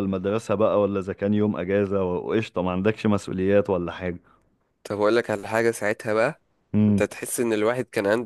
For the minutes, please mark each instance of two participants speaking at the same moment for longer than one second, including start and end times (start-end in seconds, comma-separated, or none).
none